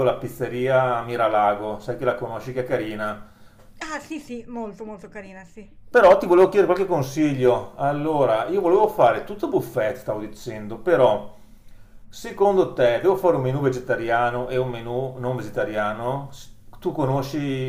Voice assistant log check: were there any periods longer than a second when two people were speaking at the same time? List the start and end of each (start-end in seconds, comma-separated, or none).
none